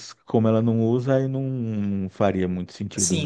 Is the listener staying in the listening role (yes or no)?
no